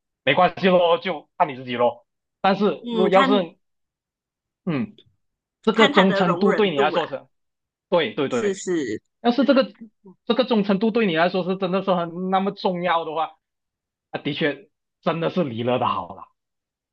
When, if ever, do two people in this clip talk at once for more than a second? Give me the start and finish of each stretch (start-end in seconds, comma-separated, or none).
5.7-7.0